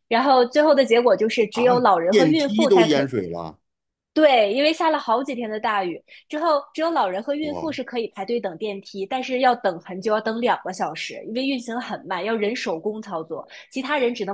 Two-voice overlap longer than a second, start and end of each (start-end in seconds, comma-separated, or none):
1.5-3.0